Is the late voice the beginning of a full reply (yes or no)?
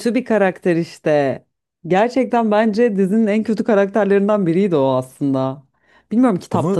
no